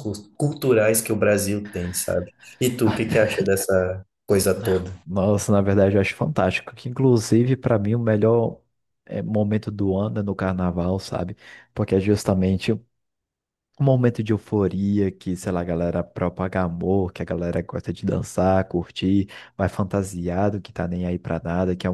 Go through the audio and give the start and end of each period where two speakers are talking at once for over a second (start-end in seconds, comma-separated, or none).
none